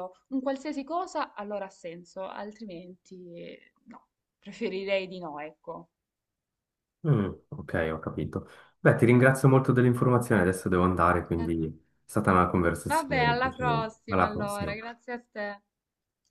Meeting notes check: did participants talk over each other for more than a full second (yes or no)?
yes